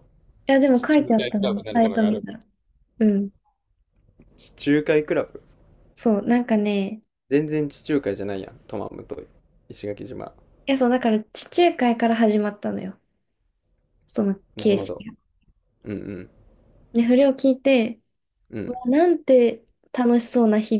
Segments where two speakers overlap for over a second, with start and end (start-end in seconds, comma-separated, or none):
0.7-2.2